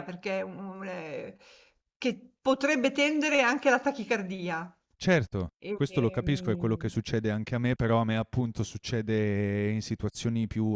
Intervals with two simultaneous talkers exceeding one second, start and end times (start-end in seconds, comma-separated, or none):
5.6-6.9